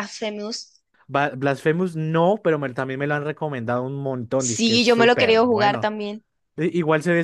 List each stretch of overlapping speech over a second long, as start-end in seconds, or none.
4.4-5.9